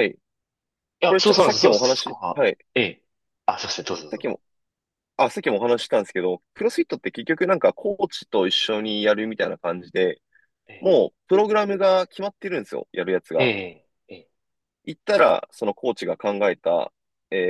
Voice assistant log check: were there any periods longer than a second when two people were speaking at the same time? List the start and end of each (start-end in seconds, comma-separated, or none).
1.0-2.6